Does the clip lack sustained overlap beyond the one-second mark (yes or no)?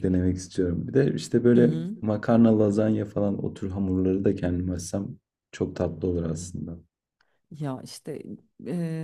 yes